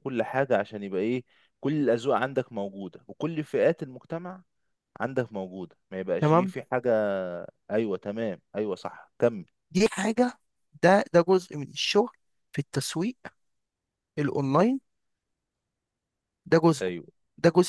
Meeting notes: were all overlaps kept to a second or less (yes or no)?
yes